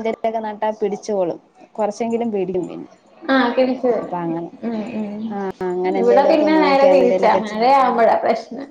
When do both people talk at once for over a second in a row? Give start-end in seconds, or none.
6.0-7.6